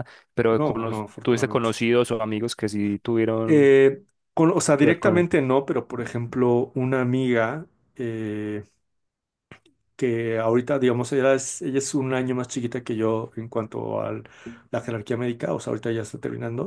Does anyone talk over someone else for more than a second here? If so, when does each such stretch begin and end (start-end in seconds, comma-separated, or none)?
0.5-1.7